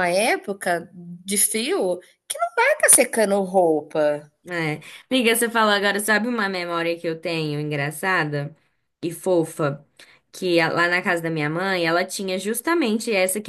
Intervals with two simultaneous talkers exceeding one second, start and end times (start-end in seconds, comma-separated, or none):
none